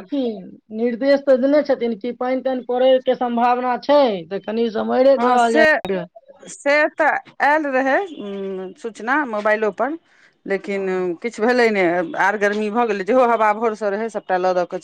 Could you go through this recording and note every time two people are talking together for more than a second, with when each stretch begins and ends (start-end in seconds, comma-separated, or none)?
none